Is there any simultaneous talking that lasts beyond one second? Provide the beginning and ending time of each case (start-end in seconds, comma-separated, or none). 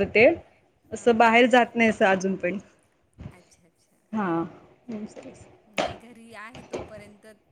none